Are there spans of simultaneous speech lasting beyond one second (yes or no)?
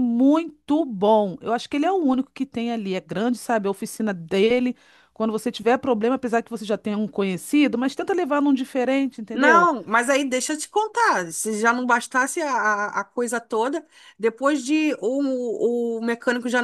no